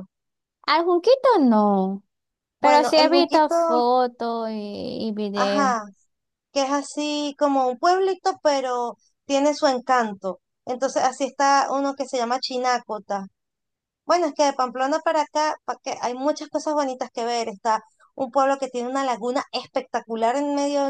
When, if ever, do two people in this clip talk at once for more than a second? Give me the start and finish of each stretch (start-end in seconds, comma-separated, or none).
2.6-3.9